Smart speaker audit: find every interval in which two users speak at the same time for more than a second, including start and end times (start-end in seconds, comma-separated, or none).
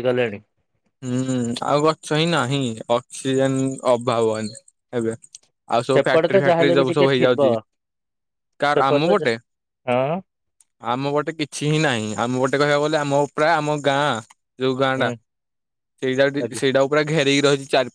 5.9-7.5